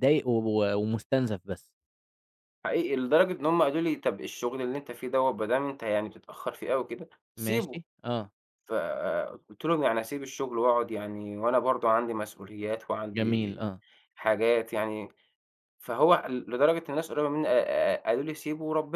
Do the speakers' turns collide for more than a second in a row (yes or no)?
no